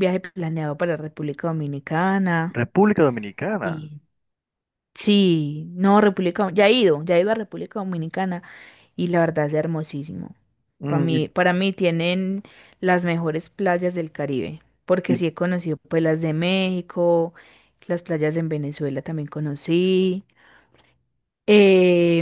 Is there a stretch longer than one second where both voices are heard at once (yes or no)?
no